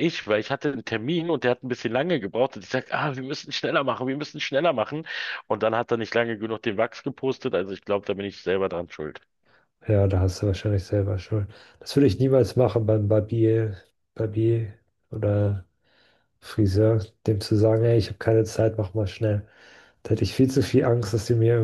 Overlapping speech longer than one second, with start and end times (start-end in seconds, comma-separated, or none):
none